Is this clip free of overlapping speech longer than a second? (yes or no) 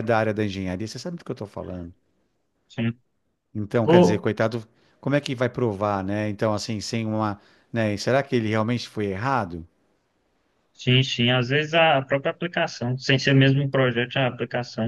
yes